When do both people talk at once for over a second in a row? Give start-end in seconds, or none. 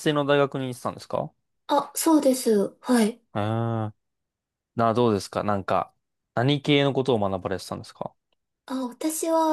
none